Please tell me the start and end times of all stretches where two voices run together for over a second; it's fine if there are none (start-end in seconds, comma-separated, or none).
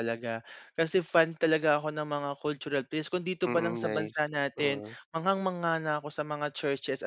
3.4-5.0